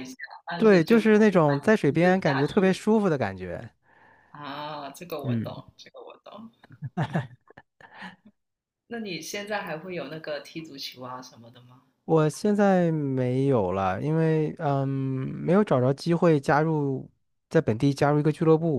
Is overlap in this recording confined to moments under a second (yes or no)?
no